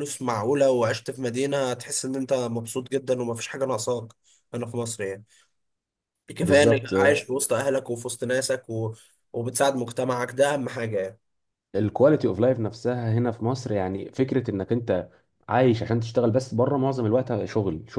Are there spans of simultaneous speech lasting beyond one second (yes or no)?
no